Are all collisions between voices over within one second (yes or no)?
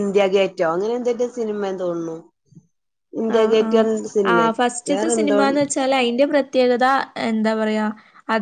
yes